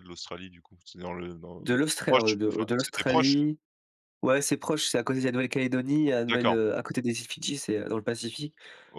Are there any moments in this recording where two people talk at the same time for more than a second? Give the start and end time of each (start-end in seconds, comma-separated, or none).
1.6-3.4